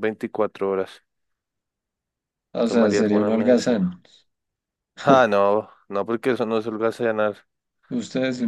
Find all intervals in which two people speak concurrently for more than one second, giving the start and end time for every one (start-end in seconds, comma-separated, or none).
2.6-3.9